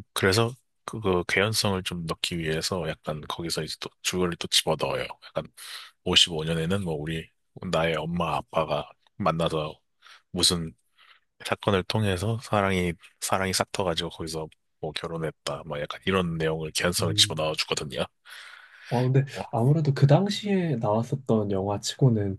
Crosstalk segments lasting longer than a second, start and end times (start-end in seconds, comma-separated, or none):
none